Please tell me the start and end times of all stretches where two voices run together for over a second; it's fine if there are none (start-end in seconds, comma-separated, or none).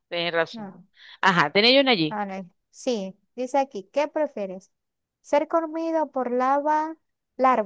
none